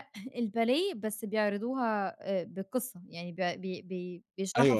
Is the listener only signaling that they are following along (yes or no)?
no